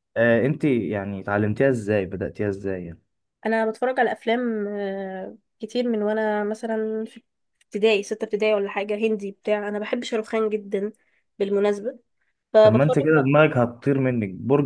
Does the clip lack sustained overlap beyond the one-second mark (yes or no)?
yes